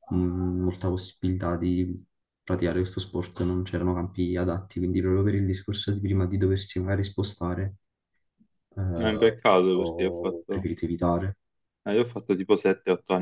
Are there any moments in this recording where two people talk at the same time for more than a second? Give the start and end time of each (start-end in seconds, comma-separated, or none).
8.9-10.7